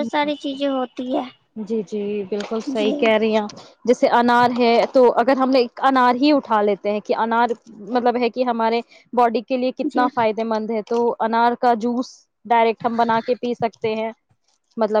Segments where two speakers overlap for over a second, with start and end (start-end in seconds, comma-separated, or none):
none